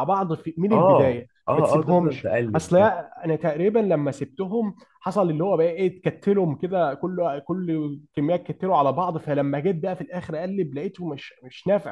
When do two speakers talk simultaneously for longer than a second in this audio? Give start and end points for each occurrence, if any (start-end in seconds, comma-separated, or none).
0.7-2.7